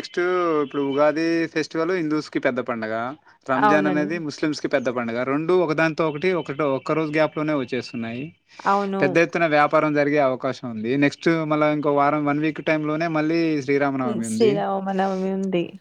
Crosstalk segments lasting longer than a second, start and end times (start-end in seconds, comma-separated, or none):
none